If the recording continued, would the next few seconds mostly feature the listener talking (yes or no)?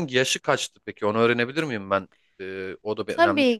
yes